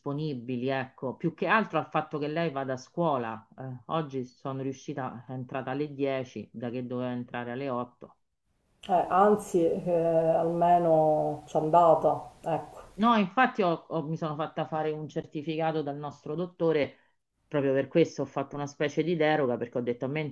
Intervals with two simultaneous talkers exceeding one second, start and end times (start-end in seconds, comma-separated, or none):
none